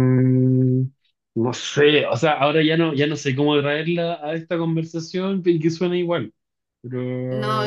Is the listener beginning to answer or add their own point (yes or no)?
yes